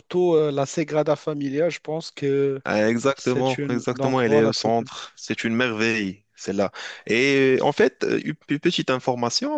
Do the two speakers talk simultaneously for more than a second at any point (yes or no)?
yes